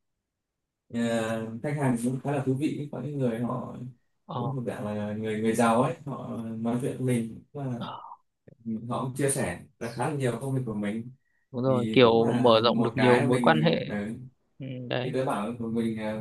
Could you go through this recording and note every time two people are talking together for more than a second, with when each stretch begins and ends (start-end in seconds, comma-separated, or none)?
11.7-13.8